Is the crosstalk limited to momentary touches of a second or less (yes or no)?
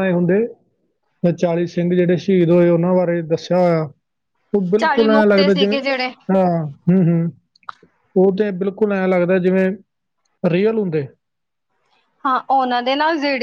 no